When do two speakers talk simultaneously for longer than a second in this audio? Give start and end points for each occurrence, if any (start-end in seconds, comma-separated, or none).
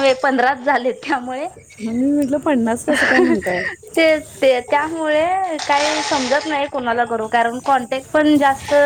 none